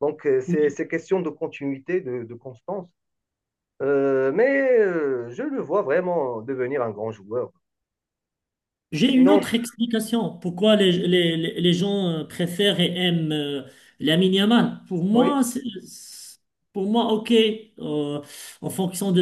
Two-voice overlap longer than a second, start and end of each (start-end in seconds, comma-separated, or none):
none